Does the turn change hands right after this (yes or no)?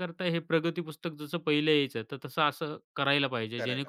no